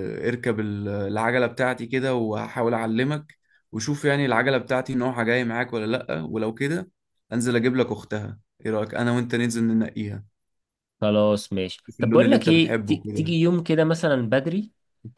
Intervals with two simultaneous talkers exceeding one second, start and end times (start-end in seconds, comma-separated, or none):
11.9-13.4